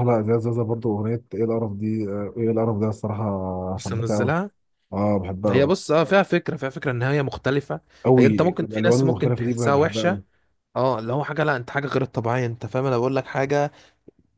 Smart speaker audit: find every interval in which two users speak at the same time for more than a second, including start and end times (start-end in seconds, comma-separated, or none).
8.2-10.2